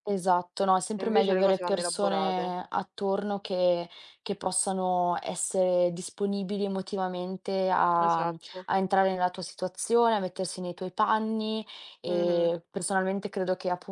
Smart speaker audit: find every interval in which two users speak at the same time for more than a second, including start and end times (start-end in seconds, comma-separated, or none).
1.0-2.5